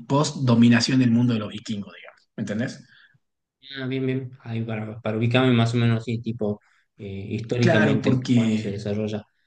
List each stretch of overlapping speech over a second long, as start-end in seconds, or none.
7.6-8.9